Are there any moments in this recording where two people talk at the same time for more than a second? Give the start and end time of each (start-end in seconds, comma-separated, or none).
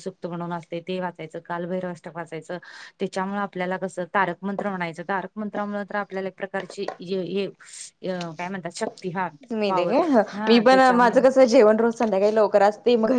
none